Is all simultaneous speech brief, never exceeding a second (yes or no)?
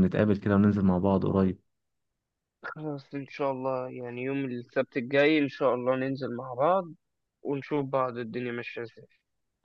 yes